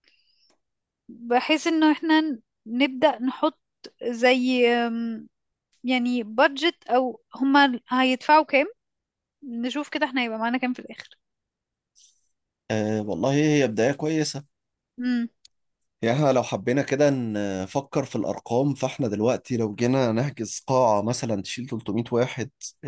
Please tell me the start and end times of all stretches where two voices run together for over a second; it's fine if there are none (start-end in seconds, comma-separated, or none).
none